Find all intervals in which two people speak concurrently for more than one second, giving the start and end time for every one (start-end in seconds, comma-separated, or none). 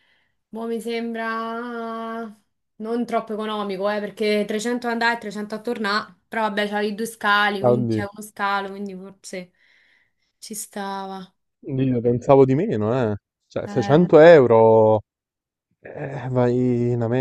none